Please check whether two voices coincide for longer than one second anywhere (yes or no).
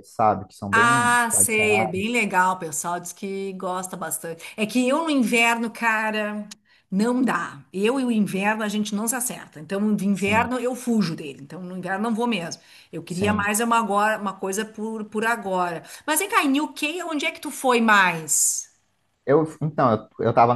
yes